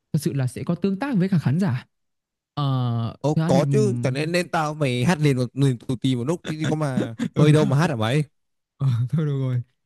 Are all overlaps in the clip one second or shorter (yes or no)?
yes